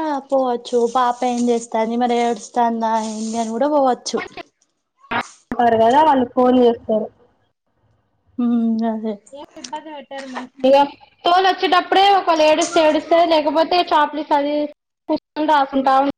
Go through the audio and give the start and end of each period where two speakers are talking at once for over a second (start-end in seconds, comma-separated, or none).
none